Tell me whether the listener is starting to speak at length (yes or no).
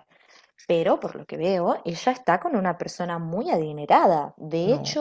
no